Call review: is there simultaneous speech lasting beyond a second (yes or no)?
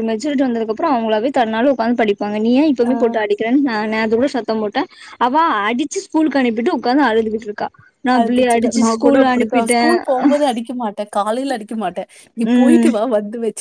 yes